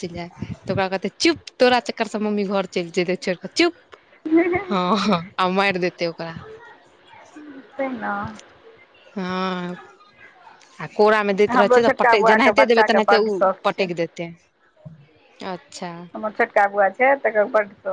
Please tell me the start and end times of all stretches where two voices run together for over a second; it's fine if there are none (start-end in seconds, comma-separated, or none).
11.5-13.9